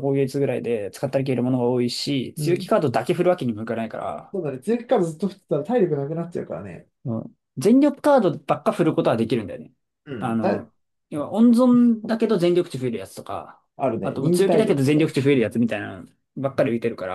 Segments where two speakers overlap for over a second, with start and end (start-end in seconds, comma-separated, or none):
14.0-15.3